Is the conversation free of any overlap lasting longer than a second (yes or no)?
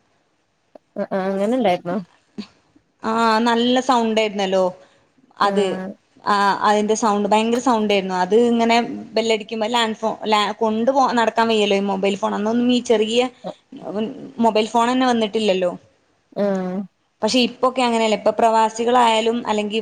yes